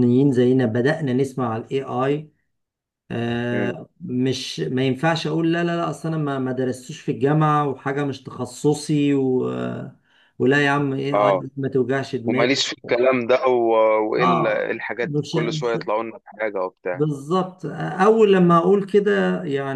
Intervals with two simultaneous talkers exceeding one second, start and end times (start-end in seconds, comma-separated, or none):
14.2-15.8